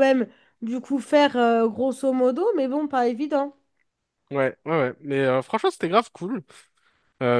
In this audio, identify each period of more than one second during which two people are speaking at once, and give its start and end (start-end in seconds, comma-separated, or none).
none